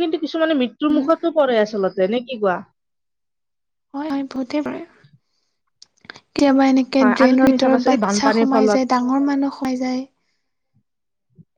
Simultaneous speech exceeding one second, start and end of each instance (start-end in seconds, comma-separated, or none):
7.0-8.8